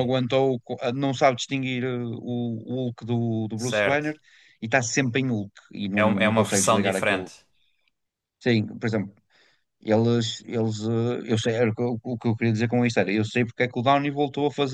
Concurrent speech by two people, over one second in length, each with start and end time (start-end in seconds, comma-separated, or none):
5.9-7.3